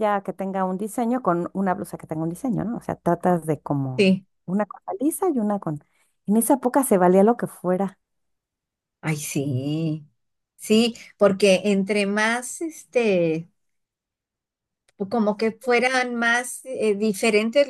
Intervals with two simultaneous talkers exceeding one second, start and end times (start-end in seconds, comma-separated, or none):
none